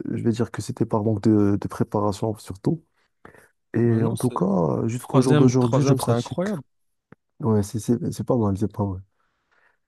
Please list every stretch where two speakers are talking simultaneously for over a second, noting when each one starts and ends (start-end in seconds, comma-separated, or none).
5.0-6.5